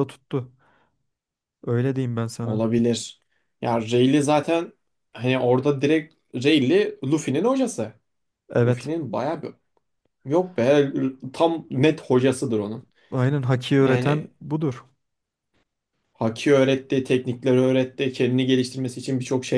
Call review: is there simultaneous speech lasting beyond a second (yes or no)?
no